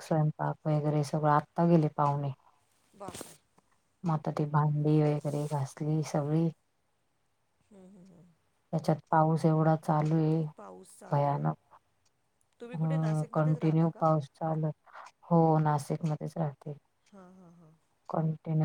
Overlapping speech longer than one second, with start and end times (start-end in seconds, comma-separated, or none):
12.7-14.1